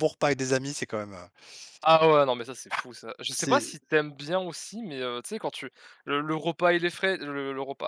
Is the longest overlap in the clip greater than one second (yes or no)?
no